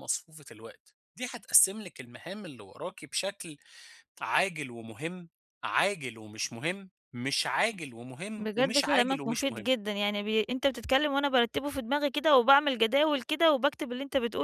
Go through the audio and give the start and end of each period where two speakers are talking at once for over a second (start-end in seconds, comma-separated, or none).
8.3-9.7